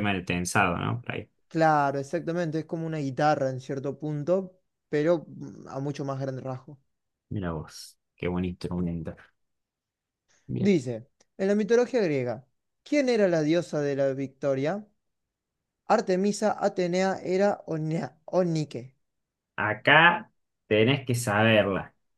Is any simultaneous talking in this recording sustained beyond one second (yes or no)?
no